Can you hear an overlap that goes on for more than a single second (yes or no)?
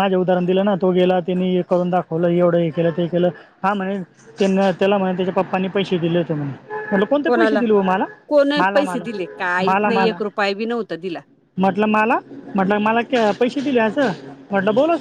yes